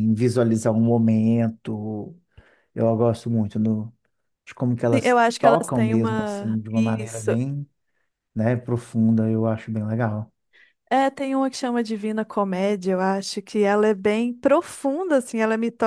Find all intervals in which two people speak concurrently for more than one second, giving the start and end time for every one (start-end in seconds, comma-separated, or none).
5.0-7.4